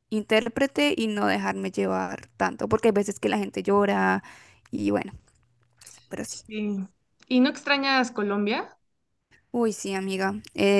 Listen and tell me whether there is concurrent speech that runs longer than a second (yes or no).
no